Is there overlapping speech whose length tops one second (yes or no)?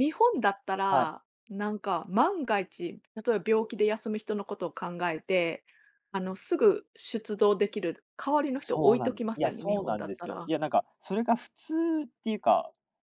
yes